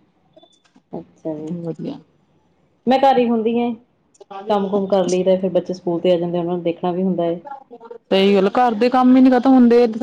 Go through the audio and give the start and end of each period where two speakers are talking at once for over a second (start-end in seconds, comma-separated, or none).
none